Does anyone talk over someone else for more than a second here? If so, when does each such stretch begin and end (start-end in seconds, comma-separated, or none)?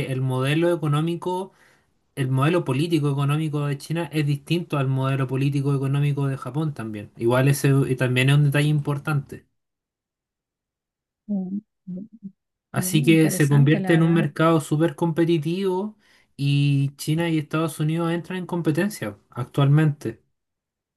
12.8-14.2